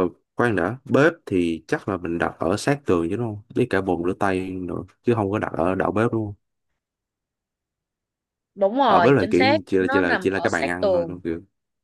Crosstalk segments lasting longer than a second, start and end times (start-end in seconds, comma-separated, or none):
8.9-11.2